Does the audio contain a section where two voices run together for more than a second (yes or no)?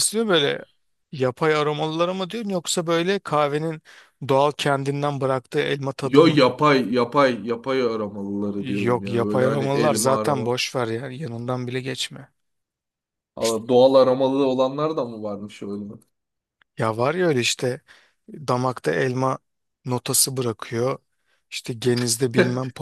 yes